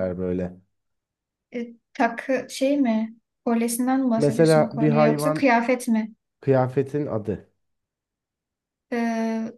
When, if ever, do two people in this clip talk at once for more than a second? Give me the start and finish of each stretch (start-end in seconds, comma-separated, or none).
4.2-5.5